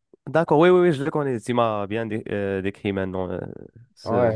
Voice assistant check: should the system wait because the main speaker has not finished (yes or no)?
no